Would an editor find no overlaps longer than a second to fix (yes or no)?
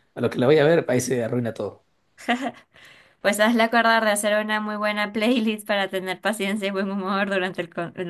yes